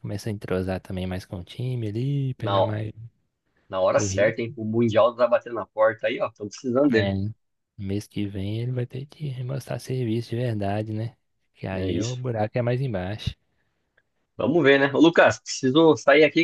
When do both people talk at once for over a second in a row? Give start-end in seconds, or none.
none